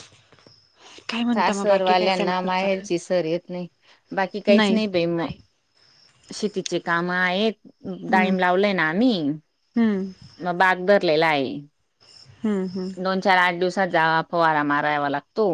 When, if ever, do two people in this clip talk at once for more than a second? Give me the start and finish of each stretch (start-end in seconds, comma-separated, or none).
1.3-3.0